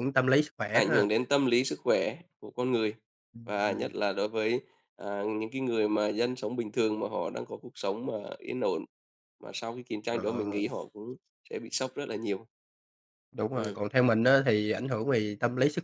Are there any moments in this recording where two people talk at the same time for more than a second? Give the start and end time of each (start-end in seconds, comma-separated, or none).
none